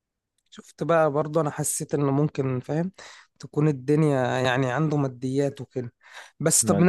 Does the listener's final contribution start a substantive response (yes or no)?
no